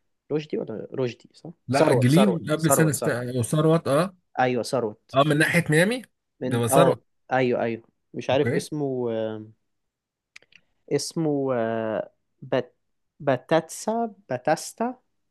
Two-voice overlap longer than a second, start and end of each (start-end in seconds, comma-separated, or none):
1.7-3.2